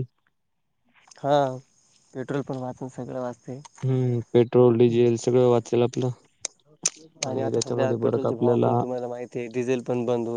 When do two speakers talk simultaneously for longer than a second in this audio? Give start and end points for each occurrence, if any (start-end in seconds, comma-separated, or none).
none